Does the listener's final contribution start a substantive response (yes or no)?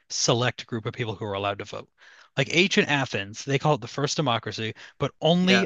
no